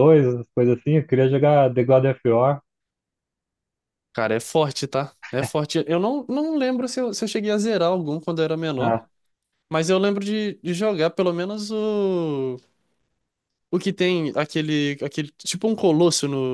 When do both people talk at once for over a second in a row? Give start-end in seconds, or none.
none